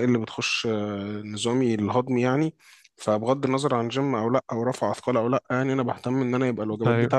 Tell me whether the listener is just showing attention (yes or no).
yes